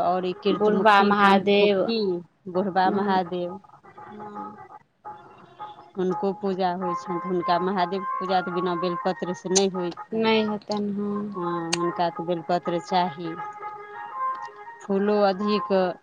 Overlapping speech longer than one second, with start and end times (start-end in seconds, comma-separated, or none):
0.6-1.9